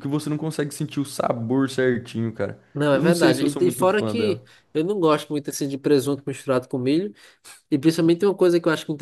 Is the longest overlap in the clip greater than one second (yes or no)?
yes